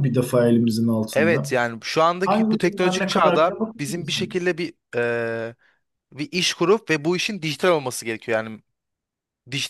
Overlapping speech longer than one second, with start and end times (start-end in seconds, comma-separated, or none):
2.2-4.4